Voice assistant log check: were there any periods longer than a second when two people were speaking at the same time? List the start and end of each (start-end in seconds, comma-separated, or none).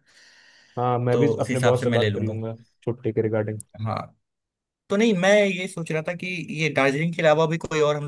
1.1-2.4